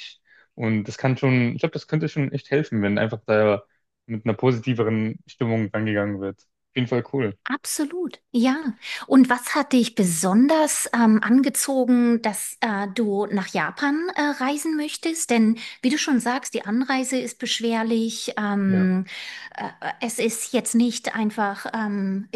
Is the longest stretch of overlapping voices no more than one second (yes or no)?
yes